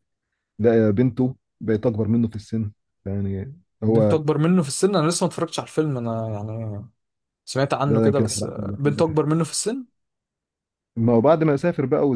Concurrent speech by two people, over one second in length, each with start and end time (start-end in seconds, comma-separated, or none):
7.9-9.2